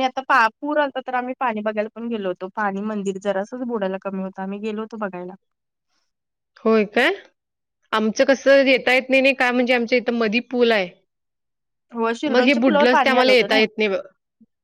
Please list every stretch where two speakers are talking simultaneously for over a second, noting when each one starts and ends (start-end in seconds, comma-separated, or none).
12.3-13.6